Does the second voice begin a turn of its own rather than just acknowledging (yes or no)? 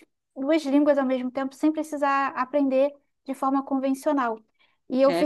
no